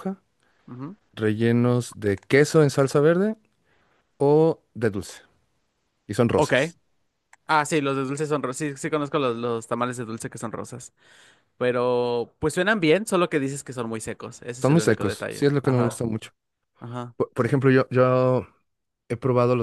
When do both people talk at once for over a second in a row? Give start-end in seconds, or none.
14.6-16.0